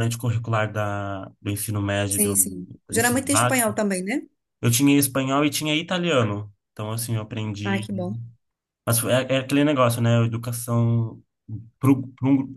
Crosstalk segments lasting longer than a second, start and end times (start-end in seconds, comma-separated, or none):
2.1-3.7